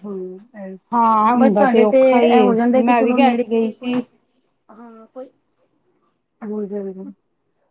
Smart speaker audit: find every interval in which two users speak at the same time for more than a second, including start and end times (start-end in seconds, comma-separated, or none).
1.4-3.9